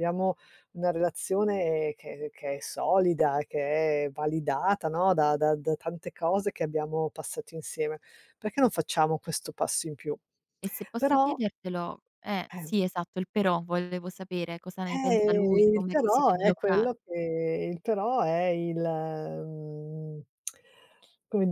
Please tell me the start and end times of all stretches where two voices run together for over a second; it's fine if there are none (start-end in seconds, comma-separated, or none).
14.8-16.9